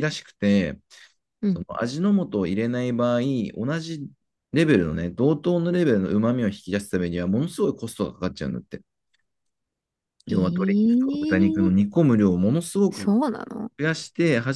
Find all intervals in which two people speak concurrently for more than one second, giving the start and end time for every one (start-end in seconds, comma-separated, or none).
10.3-11.8